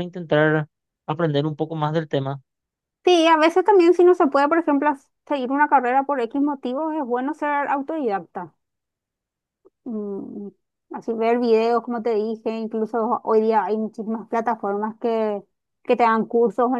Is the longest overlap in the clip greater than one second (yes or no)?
no